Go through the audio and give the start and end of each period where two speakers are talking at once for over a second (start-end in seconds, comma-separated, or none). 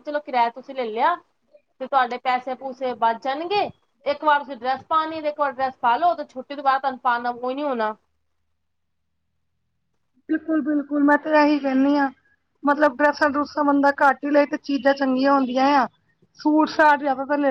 none